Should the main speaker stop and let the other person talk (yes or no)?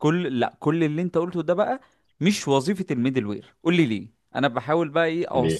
no